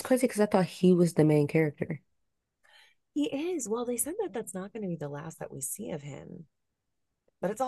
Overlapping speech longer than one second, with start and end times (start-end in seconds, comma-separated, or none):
none